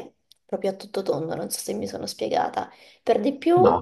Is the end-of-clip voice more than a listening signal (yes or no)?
no